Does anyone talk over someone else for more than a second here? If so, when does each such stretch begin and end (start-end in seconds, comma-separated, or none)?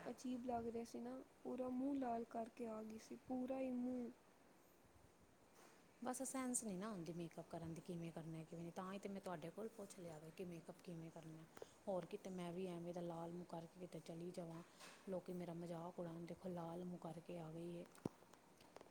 none